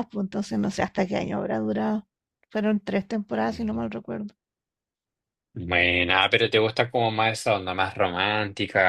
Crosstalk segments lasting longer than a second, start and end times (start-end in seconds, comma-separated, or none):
none